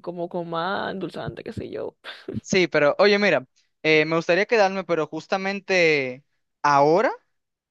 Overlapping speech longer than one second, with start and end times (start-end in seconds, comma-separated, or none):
none